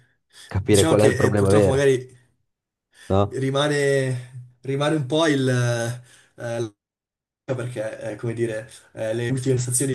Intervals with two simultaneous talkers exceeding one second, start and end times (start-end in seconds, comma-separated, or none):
0.5-1.9